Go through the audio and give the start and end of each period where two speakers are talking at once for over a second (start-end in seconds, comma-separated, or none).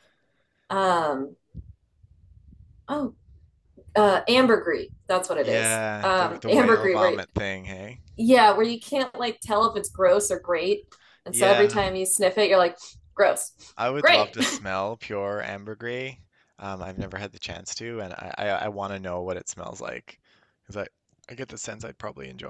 5.3-7.2